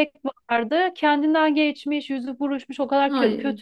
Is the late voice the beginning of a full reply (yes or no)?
no